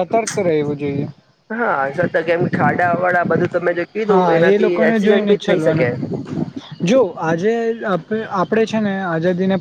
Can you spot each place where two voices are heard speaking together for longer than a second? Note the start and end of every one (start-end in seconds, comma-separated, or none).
4.1-5.9